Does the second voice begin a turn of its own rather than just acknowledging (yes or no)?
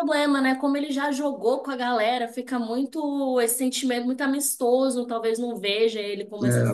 yes